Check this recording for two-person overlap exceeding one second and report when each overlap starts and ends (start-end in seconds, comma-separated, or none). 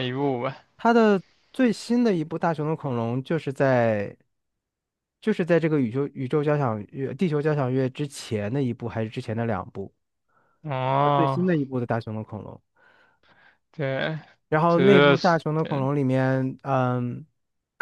14.7-15.9